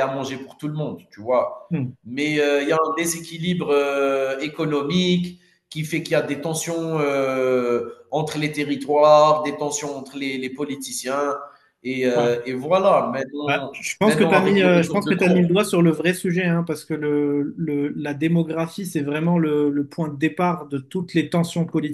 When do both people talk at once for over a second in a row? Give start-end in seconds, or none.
13.4-15.4